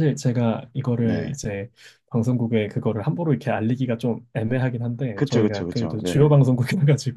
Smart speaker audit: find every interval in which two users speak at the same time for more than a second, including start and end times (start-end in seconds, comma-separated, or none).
5.1-6.3